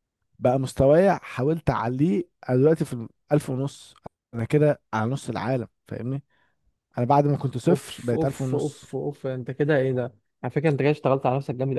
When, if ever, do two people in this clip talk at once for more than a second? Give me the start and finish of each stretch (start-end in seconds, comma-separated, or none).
7.7-8.9